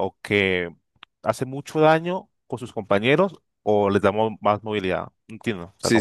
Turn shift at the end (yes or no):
yes